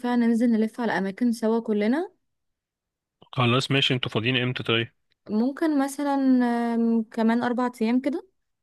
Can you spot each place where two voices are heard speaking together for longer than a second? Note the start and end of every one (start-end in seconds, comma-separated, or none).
none